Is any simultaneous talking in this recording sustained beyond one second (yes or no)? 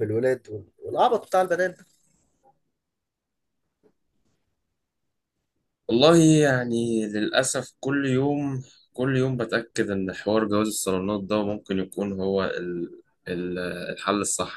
no